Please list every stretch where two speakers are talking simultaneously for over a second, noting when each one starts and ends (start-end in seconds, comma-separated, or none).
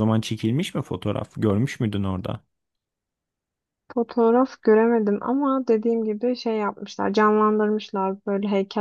none